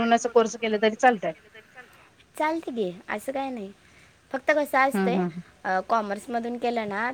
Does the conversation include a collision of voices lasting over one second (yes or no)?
no